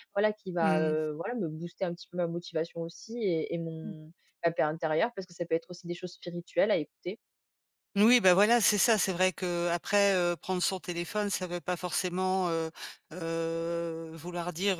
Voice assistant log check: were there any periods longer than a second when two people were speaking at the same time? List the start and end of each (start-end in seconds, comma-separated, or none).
none